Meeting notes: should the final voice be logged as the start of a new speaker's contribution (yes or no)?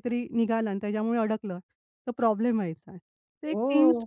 no